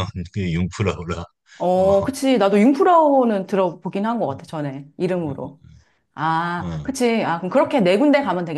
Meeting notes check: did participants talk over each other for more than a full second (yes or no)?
no